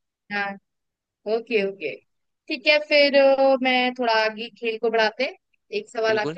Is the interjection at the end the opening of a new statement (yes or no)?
no